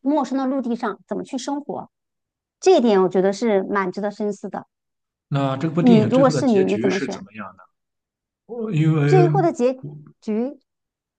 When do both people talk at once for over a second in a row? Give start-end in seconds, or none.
5.8-7.2